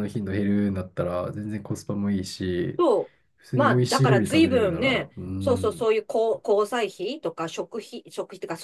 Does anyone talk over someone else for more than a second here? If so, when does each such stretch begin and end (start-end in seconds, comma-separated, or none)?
3.5-5.9